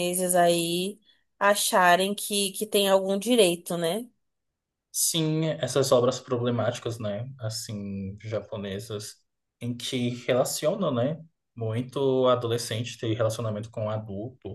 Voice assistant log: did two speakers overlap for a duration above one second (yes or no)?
no